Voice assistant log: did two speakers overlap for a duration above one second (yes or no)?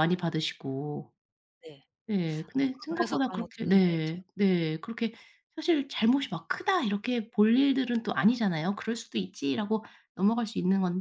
yes